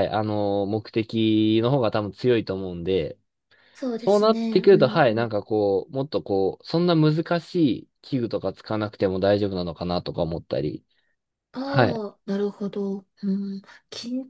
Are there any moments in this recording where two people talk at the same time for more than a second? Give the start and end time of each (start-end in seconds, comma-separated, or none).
4.0-5.3